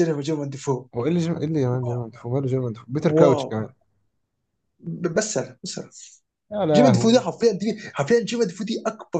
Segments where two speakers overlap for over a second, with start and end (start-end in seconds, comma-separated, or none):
none